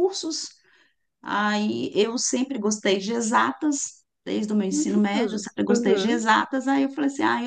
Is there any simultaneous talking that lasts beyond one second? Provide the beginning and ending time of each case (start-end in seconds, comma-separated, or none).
4.7-6.2